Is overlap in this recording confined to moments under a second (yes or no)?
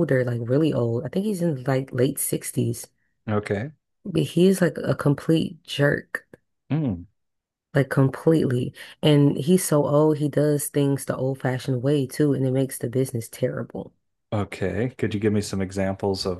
yes